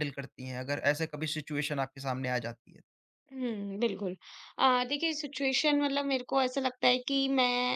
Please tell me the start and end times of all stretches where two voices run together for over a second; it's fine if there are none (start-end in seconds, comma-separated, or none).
none